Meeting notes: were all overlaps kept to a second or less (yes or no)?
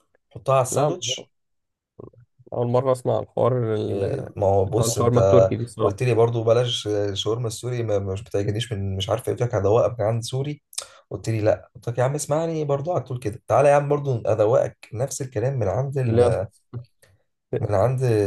no